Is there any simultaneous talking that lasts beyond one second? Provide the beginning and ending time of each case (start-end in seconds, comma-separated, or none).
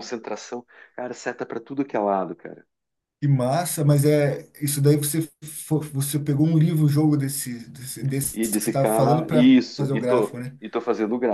8.3-10.6